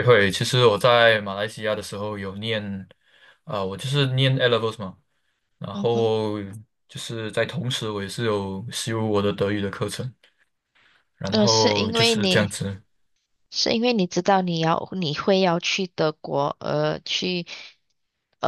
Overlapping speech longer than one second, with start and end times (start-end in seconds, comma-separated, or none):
11.3-12.5